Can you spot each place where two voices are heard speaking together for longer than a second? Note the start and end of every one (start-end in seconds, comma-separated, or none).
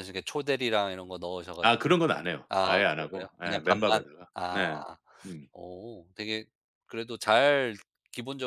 2.5-4.6